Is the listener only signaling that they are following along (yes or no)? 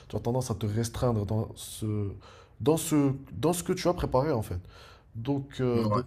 yes